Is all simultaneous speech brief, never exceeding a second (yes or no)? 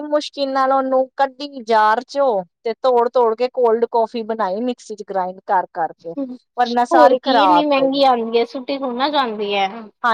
no